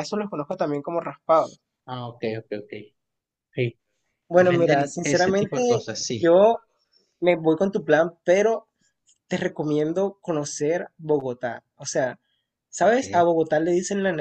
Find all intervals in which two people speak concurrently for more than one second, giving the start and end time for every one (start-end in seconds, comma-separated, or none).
4.3-6.3